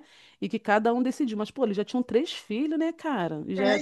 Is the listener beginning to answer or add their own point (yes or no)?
yes